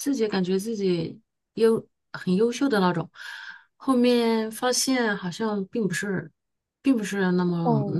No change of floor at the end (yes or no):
no